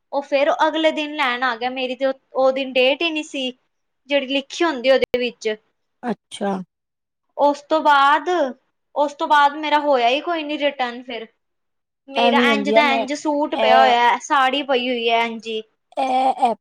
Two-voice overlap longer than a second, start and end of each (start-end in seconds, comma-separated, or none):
12.2-13.9